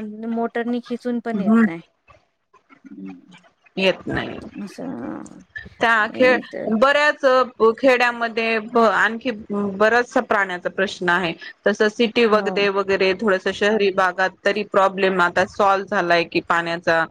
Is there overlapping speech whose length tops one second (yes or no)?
no